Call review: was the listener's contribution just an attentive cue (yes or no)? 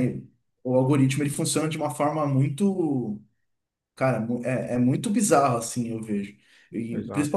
yes